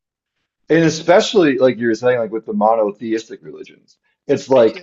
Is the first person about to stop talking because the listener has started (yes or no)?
no